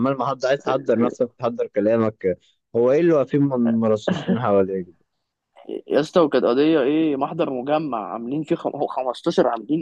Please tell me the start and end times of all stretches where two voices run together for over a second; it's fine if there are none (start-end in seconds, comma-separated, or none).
none